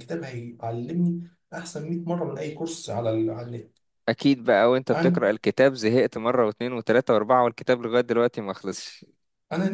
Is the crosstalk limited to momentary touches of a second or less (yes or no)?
yes